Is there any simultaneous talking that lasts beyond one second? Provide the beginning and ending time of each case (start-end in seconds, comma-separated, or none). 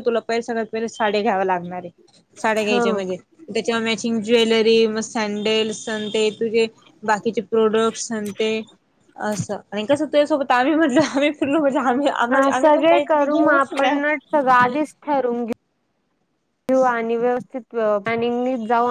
12.3-14.0